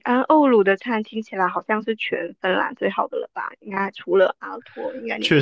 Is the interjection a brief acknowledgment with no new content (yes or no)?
no